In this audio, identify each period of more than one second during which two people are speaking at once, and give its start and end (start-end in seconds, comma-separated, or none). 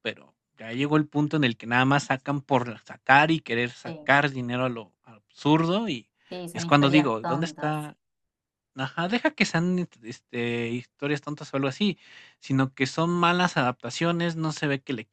6.5-7.9